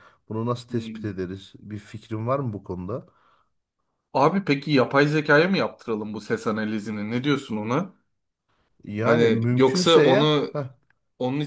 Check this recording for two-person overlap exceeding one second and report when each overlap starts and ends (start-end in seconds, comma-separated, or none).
9.0-10.5